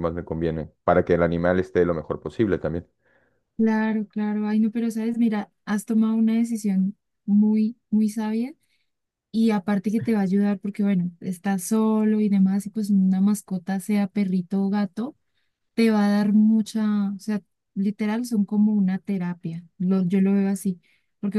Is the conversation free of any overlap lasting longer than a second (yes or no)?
yes